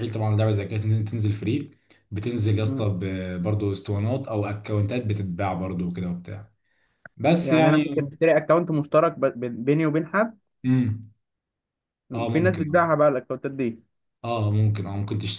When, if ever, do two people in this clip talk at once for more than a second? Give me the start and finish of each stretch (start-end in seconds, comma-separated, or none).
none